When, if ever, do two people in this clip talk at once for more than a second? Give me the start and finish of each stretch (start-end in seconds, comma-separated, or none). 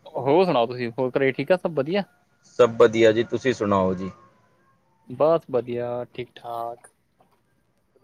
none